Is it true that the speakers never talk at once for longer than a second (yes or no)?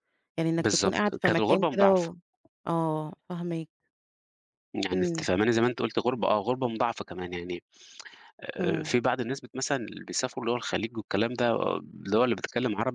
no